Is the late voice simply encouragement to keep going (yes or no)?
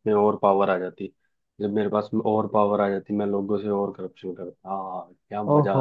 no